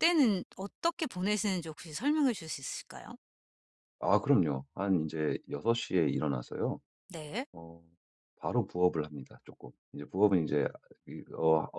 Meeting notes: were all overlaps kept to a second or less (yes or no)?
yes